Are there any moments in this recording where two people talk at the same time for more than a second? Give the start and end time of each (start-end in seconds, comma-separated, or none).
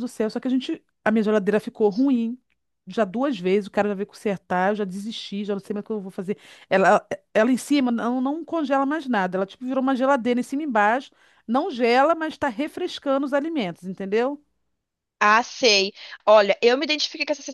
none